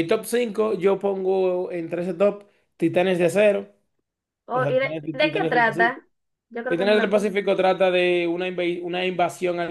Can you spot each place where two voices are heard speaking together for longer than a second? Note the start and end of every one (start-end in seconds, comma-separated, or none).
4.5-6.0